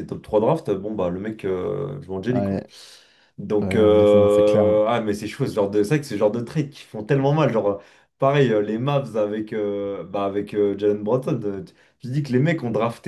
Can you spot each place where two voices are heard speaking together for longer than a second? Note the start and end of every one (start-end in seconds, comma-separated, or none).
3.6-4.8